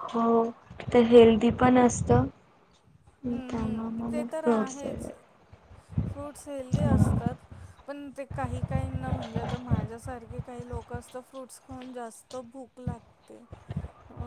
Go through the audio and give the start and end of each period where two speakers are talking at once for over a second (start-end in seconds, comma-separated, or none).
3.3-5.1